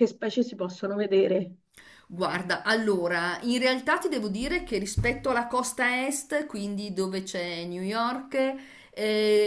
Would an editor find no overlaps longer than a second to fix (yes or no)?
yes